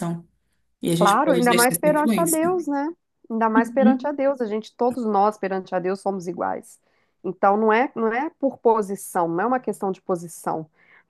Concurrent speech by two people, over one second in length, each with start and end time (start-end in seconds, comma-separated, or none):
0.9-2.6